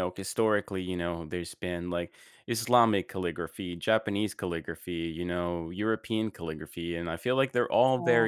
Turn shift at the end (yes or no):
no